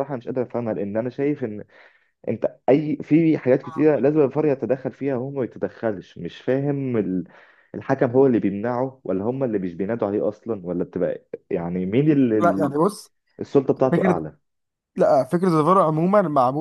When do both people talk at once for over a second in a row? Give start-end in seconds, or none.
none